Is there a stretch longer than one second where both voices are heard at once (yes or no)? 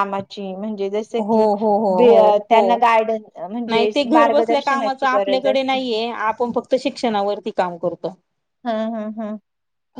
yes